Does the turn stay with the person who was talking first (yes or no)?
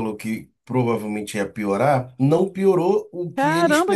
no